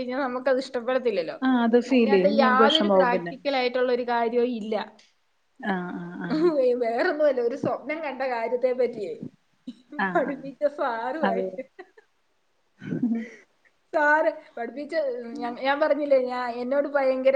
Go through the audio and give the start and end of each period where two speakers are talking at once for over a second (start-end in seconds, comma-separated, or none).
1.9-3.3